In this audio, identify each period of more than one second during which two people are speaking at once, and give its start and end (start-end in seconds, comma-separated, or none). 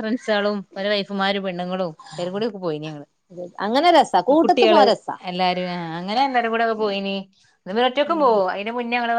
none